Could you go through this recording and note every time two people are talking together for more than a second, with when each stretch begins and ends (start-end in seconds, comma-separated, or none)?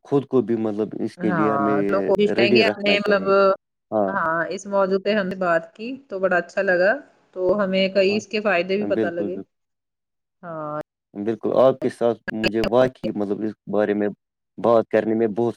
1.3-3.2